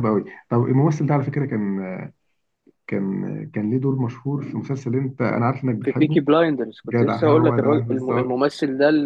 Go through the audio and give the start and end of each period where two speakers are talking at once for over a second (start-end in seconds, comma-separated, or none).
6.9-8.4